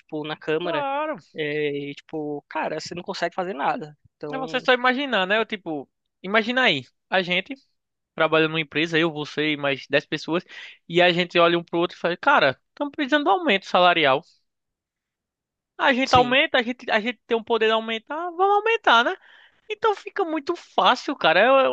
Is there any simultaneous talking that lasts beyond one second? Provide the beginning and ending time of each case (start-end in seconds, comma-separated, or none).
none